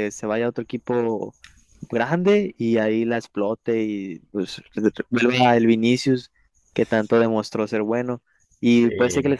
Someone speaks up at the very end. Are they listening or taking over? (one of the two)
listening